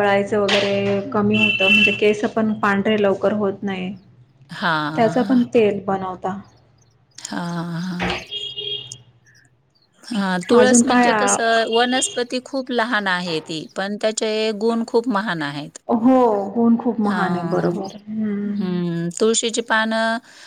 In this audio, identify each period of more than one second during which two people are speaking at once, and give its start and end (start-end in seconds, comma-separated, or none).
none